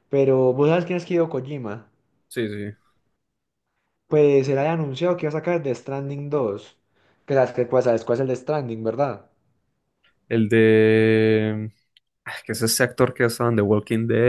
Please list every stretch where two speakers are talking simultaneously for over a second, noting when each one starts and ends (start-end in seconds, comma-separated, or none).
none